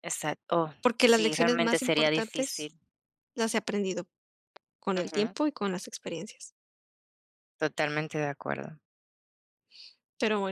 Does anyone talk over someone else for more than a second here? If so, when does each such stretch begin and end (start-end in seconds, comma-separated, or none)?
0.8-2.7